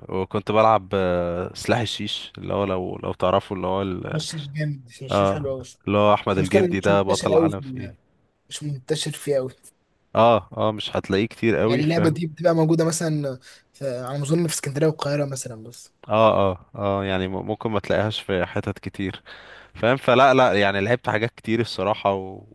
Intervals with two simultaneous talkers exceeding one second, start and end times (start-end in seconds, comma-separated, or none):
6.4-7.9